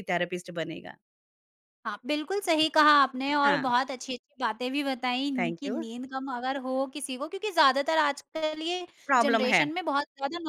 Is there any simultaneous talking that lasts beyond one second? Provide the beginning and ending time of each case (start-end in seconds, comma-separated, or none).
none